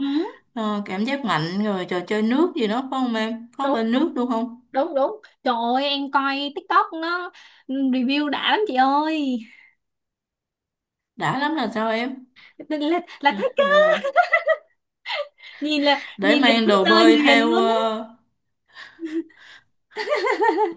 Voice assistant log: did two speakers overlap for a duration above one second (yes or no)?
yes